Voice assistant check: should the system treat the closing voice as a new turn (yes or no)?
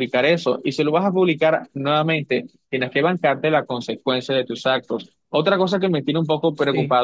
no